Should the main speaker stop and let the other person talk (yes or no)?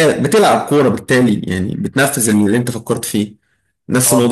no